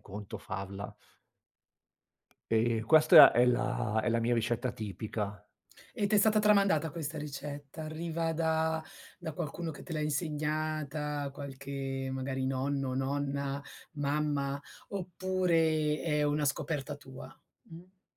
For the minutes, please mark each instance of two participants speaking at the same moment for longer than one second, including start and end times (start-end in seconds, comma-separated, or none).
none